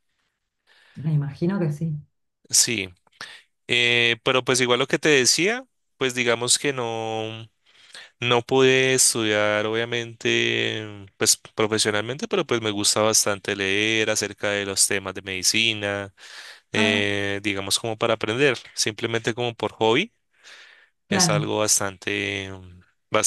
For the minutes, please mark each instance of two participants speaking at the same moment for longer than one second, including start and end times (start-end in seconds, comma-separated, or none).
none